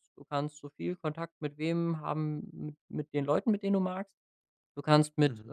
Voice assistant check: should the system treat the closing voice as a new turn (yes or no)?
no